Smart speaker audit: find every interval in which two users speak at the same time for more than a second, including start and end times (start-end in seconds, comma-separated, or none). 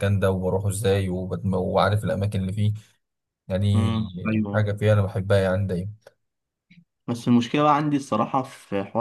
none